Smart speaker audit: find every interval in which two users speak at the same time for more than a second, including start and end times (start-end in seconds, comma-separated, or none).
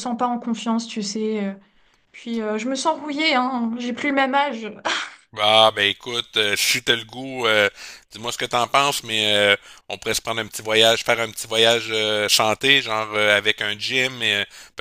none